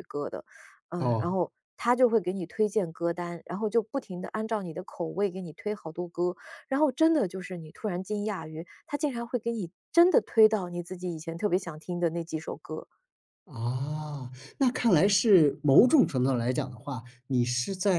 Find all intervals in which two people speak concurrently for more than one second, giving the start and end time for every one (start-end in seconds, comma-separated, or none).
none